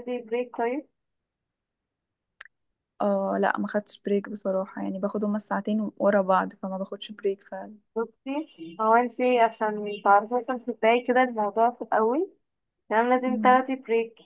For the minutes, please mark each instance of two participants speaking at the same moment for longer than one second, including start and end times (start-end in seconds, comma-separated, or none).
none